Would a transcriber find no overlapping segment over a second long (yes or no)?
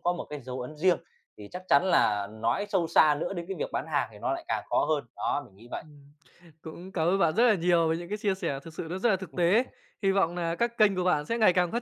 yes